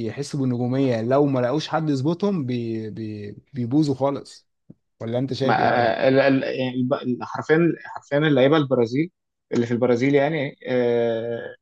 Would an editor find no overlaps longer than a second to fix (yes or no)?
yes